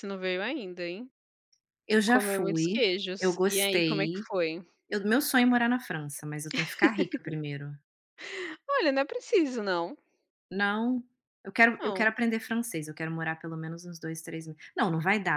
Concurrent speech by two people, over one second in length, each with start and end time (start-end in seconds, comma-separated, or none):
2.0-4.2